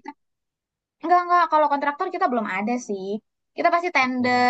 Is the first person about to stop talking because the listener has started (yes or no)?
no